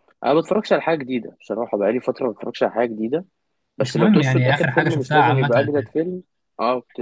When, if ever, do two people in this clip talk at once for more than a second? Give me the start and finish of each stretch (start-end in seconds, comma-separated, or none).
3.8-6.0